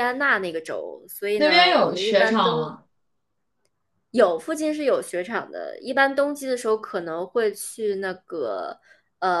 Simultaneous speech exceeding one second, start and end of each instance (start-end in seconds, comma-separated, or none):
1.3-2.7